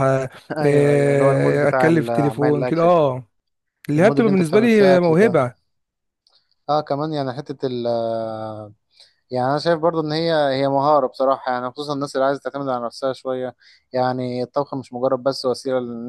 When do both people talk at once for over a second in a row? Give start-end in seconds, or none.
0.6-3.1, 4.0-5.4